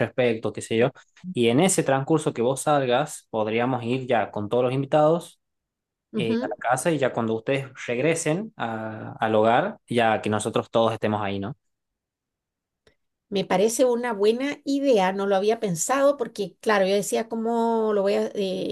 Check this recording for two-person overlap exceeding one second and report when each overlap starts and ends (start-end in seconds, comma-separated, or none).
none